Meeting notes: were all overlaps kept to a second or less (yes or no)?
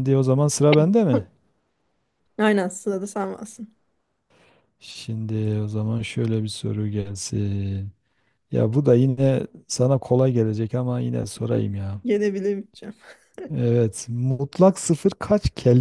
yes